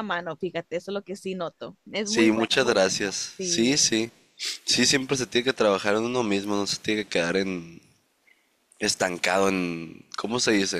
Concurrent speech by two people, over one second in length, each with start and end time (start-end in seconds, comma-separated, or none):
2.0-3.9